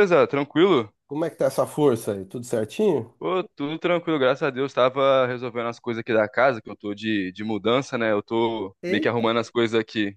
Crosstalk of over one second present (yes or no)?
no